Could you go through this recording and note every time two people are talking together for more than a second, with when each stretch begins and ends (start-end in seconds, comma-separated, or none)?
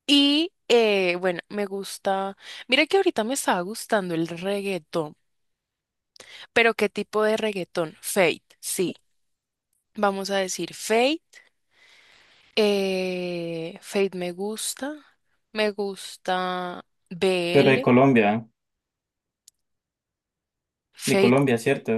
none